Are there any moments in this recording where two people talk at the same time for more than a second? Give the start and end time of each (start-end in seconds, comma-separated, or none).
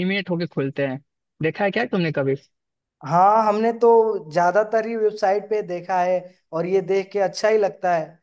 none